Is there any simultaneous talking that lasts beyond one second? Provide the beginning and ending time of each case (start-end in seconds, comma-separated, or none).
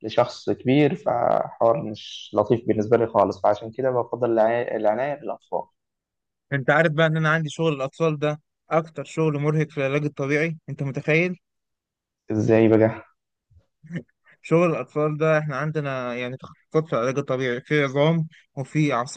none